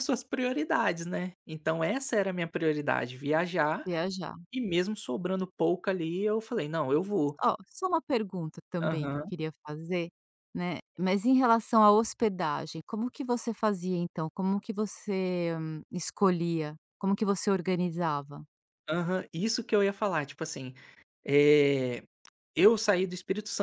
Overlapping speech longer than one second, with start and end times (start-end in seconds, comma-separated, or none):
none